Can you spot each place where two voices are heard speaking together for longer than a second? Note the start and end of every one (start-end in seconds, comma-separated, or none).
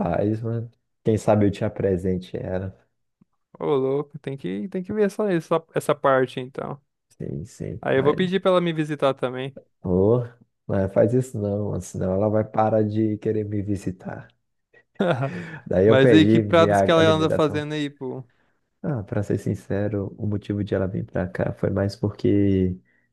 15.9-17.6